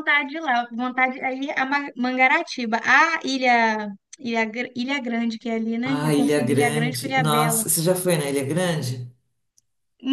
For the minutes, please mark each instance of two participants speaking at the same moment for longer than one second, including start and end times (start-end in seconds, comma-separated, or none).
5.8-7.7